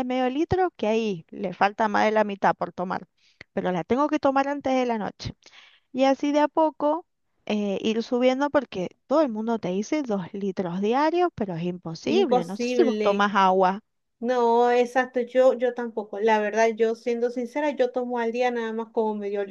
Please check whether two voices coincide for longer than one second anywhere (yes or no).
yes